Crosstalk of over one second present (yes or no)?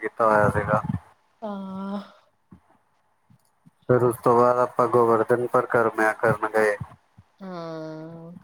no